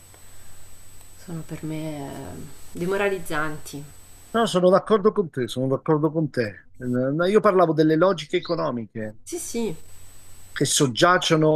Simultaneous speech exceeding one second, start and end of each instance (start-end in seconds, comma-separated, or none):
none